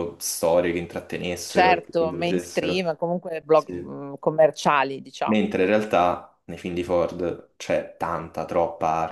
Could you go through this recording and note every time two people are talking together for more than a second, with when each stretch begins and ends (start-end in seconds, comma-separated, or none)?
1.4-2.9